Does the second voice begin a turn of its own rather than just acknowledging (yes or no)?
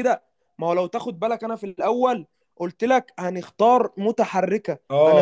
yes